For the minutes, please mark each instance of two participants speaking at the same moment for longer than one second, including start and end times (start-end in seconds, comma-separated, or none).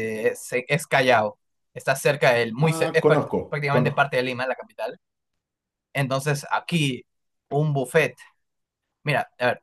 2.6-4.1